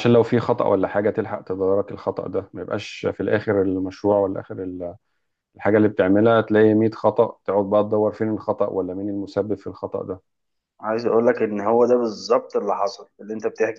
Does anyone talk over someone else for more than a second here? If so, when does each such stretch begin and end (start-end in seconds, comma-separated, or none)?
none